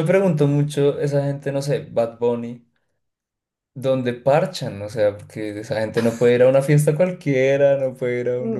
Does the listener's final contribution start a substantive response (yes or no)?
yes